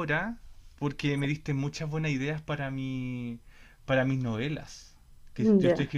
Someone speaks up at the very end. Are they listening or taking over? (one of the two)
listening